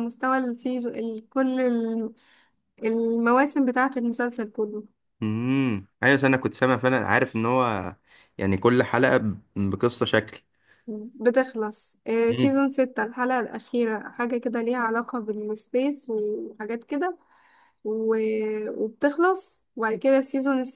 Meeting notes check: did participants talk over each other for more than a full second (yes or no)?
no